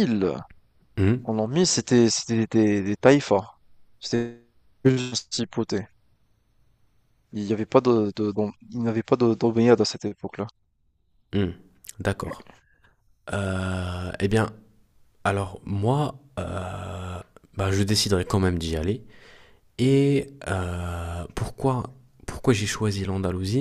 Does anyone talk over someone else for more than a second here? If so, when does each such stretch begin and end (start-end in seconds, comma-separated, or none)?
none